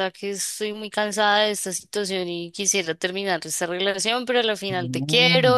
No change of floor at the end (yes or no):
yes